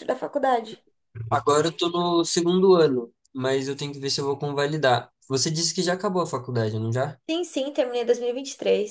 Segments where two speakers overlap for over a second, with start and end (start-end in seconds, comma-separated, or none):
none